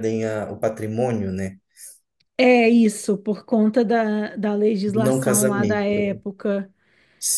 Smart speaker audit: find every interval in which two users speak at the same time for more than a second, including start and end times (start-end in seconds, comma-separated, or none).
4.8-6.2